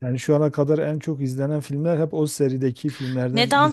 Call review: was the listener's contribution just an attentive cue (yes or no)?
no